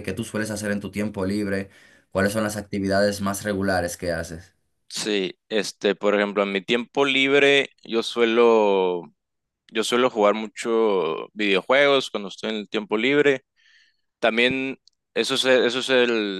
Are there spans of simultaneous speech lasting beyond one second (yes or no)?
no